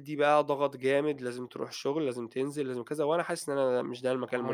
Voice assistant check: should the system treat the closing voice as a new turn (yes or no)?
yes